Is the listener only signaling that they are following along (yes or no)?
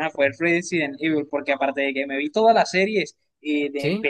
yes